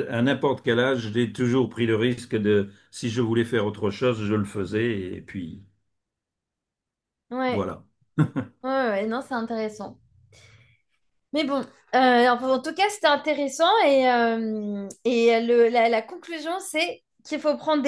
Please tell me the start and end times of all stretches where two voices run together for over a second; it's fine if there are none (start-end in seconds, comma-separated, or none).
none